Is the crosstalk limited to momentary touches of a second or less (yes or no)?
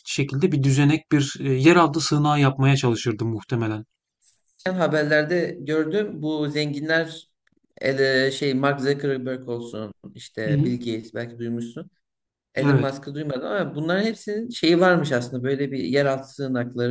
yes